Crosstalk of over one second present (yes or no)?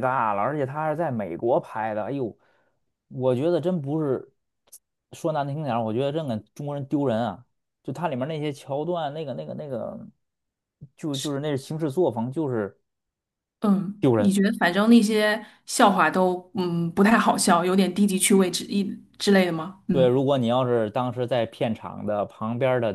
no